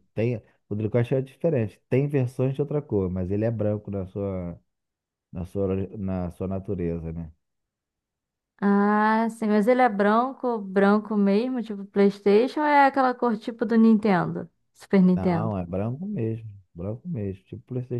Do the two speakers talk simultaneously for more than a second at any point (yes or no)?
no